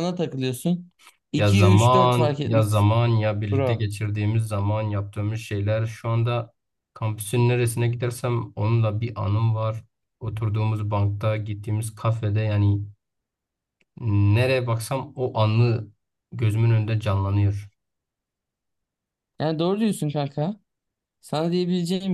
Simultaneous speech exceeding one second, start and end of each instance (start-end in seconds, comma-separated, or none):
1.4-2.9